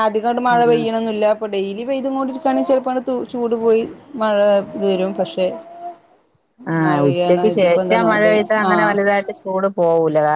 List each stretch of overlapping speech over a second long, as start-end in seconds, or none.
6.8-8.9